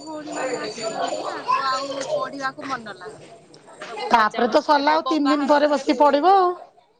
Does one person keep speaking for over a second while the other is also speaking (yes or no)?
yes